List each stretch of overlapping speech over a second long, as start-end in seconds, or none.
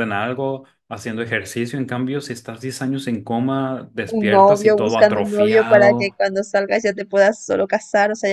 4.0-6.2